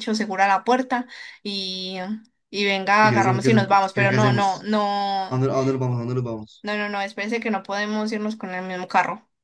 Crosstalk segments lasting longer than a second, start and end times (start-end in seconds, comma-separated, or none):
3.0-4.7